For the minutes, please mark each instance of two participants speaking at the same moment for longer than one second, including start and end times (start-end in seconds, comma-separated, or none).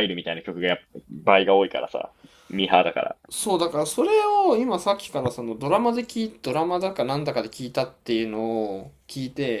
none